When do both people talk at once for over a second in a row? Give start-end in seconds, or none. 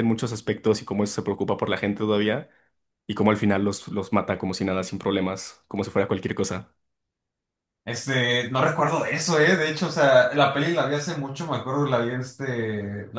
none